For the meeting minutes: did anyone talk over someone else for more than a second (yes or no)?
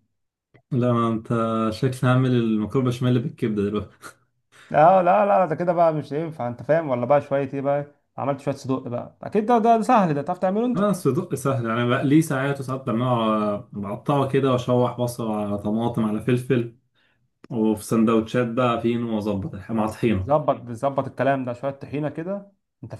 no